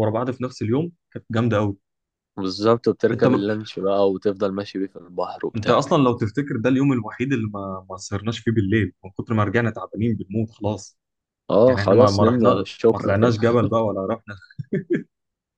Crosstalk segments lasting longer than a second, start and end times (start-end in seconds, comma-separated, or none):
11.7-13.3